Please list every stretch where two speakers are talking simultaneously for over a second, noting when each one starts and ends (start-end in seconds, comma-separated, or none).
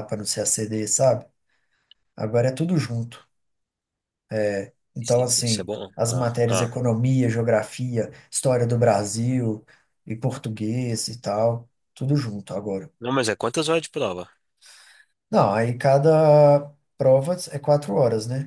5.0-6.8